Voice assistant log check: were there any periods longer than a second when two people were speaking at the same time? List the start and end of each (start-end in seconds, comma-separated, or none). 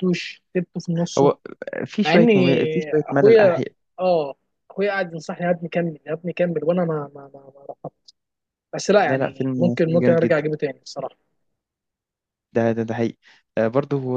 9.0-10.4